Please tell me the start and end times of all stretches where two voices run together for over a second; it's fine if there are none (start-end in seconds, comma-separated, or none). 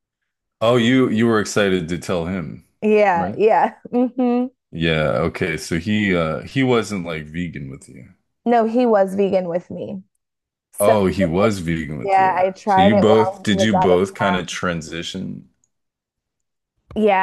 12.0-14.6